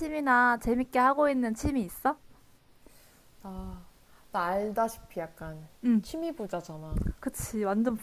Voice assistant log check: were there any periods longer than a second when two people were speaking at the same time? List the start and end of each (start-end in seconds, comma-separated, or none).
none